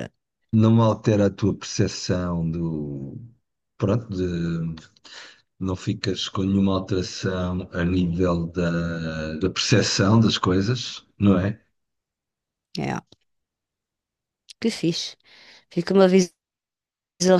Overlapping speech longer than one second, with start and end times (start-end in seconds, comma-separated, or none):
none